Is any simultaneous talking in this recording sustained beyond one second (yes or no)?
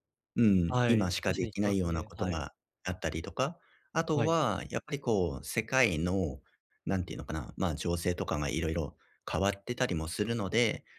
yes